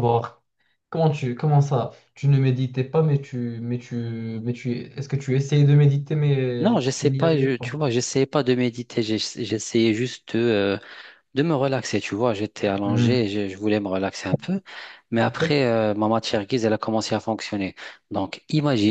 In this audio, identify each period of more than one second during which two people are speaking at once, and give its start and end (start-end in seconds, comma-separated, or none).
6.6-7.8